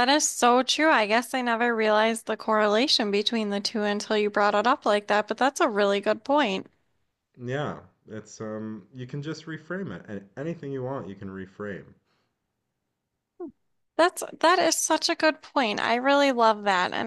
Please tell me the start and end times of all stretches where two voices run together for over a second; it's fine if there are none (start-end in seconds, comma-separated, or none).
none